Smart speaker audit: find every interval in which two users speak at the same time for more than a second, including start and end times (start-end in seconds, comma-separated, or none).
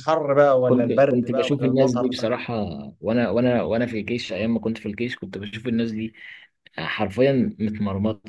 0.7-2.3